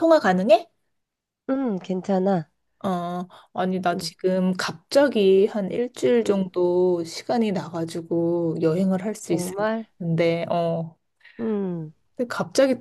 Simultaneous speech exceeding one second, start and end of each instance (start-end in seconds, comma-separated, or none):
none